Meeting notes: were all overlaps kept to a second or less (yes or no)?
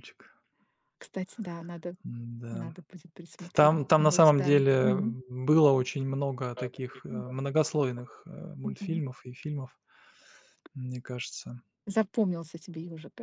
no